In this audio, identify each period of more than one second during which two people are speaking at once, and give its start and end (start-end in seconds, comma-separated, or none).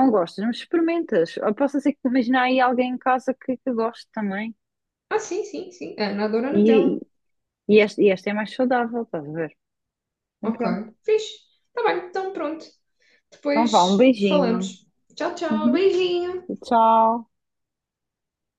13.5-14.8